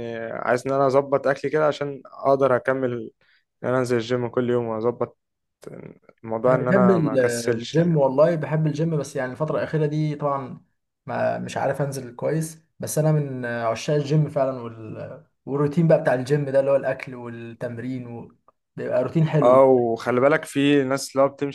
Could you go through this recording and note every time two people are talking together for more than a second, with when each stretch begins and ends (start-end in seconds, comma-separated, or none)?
6.5-8.0